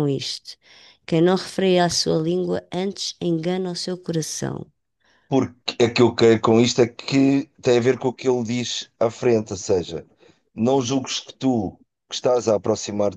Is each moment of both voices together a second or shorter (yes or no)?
yes